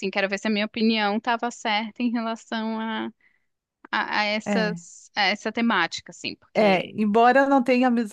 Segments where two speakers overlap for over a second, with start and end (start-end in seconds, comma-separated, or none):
none